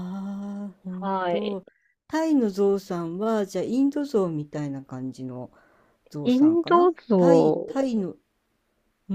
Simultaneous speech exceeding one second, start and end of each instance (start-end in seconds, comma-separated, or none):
6.2-7.8